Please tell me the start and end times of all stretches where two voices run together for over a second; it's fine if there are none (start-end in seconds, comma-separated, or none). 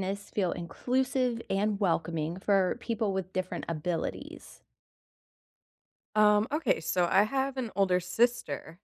none